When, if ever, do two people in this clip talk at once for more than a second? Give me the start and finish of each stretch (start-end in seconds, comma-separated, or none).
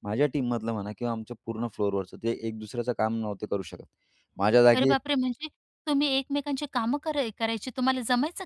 none